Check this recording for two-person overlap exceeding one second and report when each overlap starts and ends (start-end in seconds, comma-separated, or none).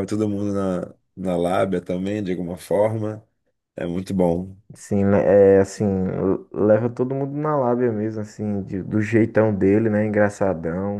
none